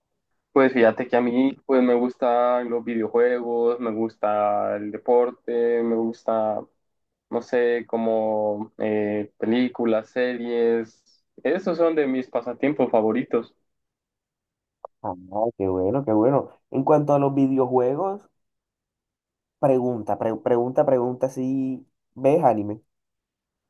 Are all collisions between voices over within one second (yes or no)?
yes